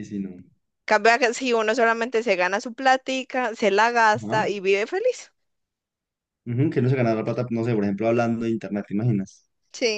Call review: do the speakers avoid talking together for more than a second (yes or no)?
yes